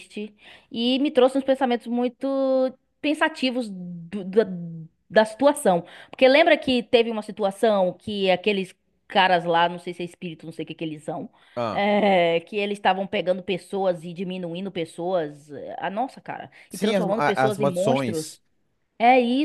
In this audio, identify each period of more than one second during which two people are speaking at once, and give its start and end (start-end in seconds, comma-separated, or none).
16.7-18.4